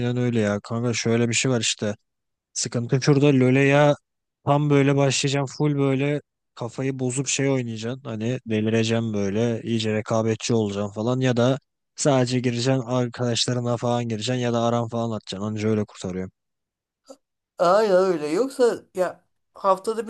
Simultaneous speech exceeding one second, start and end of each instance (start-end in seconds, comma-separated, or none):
none